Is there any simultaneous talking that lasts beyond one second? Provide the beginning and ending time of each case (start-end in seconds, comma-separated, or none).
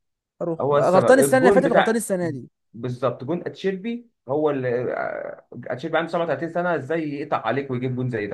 0.6-2.0